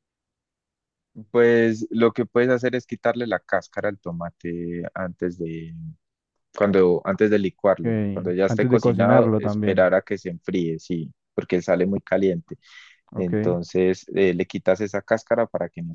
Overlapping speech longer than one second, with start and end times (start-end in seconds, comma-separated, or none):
7.8-9.9